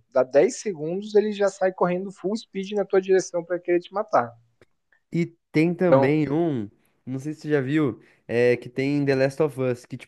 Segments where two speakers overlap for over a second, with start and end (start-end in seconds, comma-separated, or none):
none